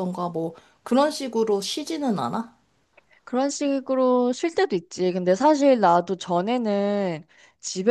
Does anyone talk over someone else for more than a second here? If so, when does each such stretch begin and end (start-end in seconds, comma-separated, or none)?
none